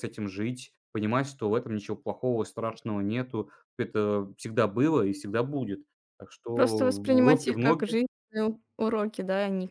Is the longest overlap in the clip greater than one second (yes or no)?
yes